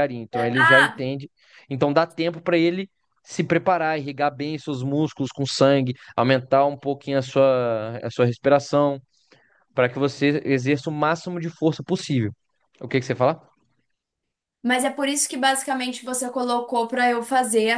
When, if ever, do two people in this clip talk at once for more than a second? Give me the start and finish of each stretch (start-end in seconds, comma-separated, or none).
none